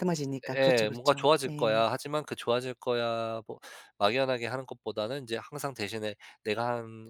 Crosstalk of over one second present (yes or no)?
yes